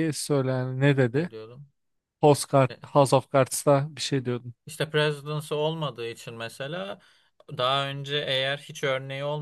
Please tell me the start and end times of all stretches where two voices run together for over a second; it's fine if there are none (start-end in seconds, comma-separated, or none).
none